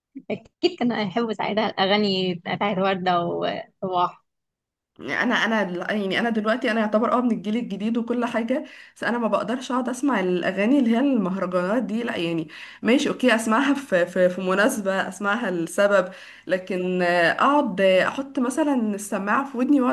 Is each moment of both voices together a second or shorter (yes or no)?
yes